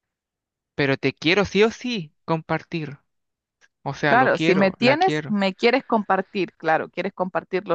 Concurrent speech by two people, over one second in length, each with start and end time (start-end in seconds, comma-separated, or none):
4.0-5.4